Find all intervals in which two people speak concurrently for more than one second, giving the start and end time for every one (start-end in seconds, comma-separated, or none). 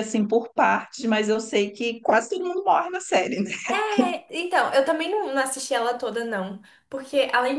none